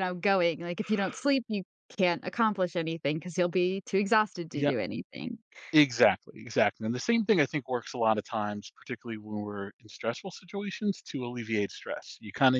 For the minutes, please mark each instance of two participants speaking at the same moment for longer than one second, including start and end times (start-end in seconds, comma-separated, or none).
none